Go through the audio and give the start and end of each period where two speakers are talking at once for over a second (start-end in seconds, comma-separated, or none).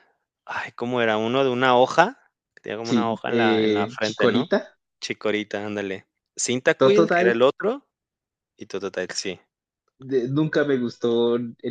2.8-4.5